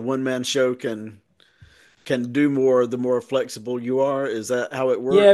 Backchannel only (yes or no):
no